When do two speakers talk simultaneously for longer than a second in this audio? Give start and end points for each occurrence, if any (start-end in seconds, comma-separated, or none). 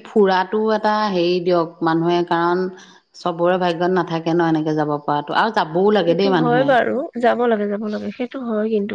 none